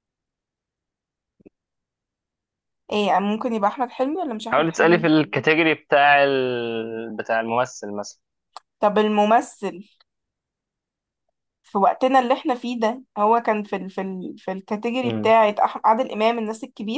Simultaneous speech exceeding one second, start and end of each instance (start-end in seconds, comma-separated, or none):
none